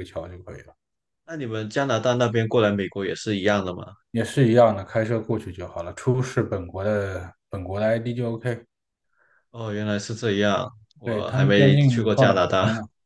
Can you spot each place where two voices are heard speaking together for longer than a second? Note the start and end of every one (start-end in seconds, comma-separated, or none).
11.0-12.3